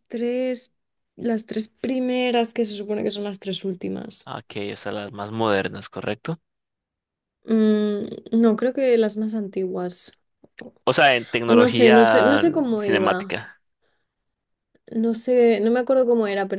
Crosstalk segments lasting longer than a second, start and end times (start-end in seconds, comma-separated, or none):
11.5-13.4